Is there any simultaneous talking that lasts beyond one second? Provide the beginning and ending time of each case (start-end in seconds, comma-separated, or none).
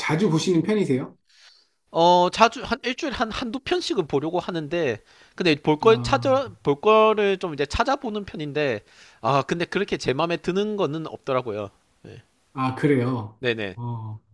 none